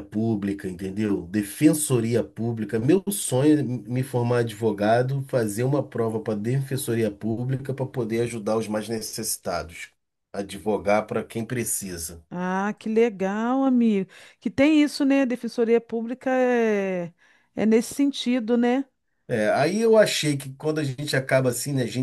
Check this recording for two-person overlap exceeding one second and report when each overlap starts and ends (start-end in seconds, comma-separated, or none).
none